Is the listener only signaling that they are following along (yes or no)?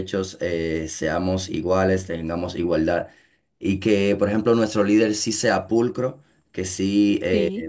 yes